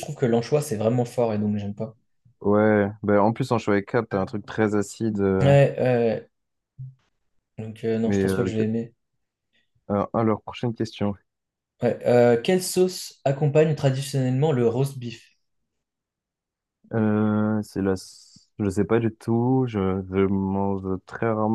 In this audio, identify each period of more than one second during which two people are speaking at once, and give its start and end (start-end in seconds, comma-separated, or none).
none